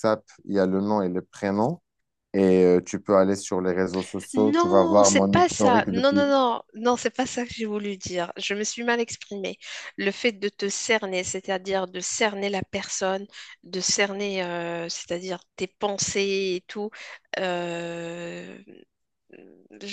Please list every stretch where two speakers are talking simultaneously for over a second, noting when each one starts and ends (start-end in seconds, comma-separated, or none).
4.3-6.2